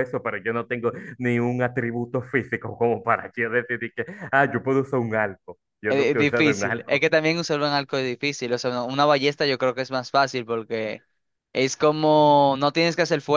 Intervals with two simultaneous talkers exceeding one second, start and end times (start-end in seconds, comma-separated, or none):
5.9-7.1